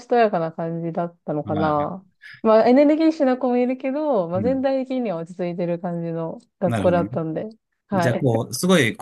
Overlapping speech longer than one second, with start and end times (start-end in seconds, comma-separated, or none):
none